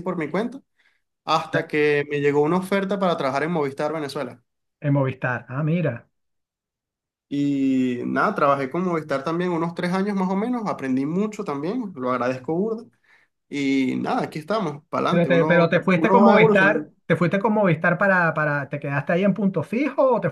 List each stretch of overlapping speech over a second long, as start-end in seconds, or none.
15.1-16.9